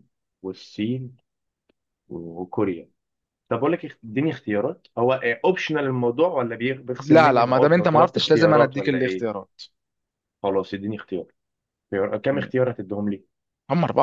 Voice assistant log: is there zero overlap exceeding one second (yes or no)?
no